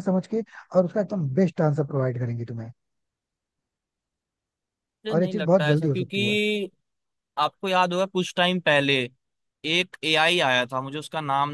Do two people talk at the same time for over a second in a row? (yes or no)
yes